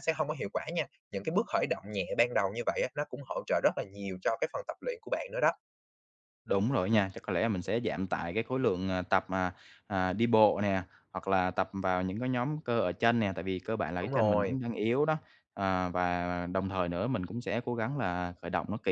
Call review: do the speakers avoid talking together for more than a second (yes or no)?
yes